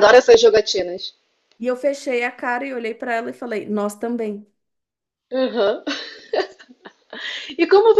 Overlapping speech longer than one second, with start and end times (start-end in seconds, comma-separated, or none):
none